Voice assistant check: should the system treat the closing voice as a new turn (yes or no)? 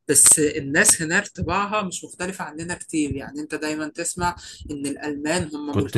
no